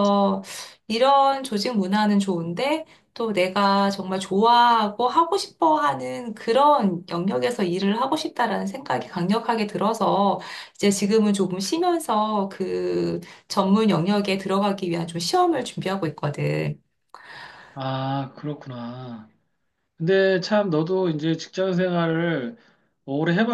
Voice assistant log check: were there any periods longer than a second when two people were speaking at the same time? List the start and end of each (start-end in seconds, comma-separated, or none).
none